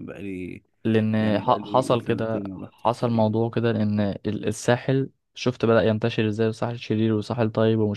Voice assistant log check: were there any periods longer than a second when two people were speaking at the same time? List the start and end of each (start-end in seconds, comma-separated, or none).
1.2-3.4